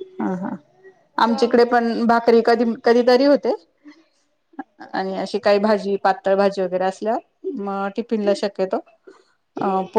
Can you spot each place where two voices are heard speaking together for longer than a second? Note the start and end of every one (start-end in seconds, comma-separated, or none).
4.9-6.3